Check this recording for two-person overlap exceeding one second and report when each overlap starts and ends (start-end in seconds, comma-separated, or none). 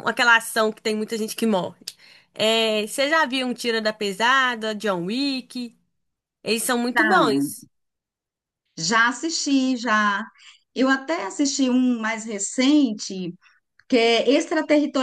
none